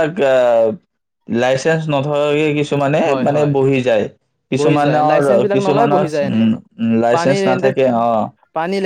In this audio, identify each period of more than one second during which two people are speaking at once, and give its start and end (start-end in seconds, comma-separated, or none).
4.6-6.4